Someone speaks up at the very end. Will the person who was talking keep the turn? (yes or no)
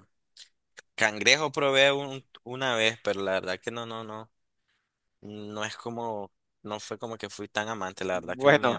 no